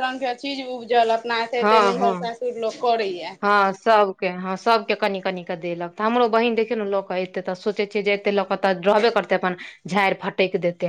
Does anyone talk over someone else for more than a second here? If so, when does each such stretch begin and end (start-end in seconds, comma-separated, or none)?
none